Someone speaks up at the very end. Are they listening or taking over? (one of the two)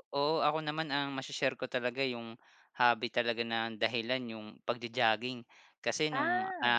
listening